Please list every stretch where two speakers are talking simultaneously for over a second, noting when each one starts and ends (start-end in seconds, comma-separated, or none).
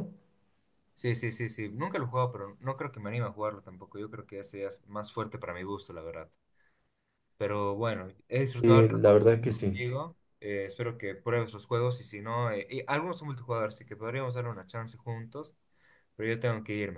8.4-9.8